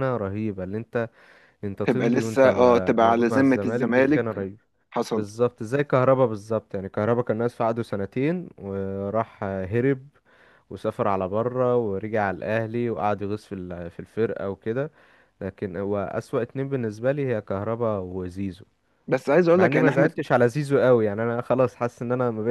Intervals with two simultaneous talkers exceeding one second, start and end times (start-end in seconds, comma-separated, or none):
1.8-4.2